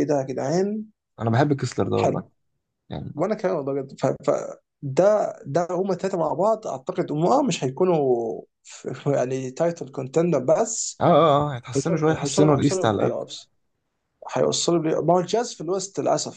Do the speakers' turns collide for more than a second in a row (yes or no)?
yes